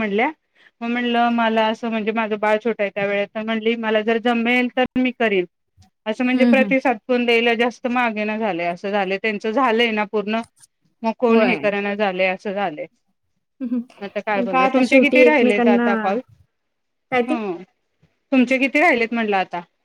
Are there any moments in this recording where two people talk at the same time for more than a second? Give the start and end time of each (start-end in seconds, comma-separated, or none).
14.3-15.8